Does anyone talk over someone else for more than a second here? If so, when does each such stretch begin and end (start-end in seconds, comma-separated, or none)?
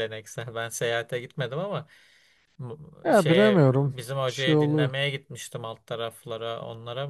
3.0-4.9